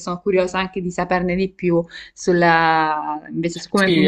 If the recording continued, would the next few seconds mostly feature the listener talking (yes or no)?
yes